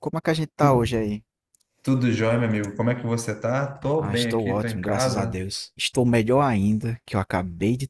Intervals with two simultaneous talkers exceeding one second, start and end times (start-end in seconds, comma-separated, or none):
4.0-5.4